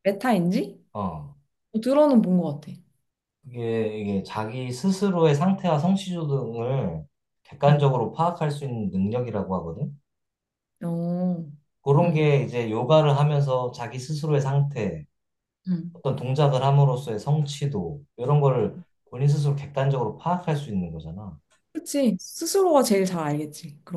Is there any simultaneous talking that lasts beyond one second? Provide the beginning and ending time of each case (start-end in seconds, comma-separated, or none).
none